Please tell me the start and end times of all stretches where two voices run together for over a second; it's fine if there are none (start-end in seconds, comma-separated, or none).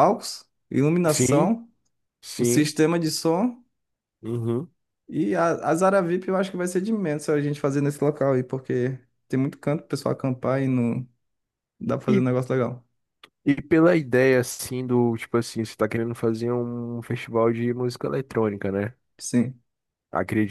none